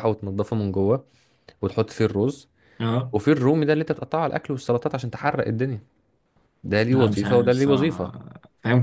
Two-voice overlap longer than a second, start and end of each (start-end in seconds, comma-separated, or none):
6.9-8.1